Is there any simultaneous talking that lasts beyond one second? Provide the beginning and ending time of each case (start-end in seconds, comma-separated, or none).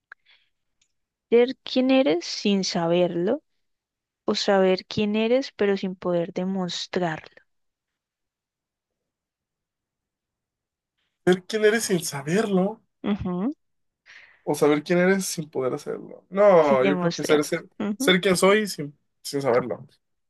16.6-18.2